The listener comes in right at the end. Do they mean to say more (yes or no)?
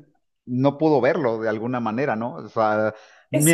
no